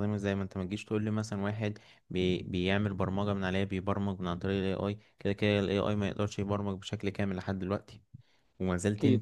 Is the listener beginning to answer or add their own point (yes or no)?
no